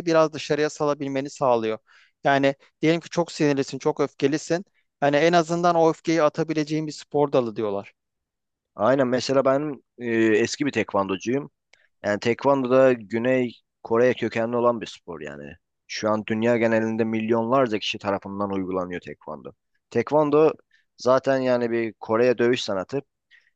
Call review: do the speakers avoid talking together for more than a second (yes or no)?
yes